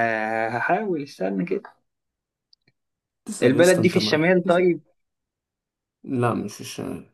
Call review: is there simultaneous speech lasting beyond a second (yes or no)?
yes